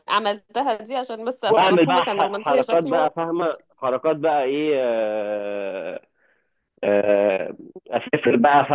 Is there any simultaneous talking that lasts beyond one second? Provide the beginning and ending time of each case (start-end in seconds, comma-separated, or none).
1.4-3.1